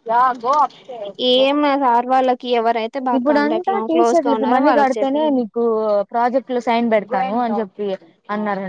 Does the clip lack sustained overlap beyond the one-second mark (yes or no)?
no